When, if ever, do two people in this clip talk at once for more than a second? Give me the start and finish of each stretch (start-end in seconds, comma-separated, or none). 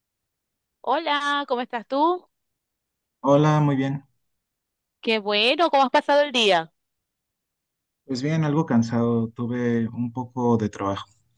none